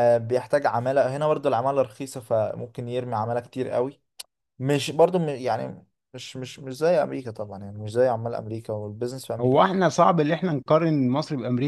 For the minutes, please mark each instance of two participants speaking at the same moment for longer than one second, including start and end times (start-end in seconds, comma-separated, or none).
none